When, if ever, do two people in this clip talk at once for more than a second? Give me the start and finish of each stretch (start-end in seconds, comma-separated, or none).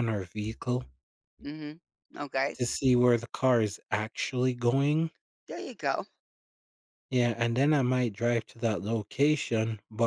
none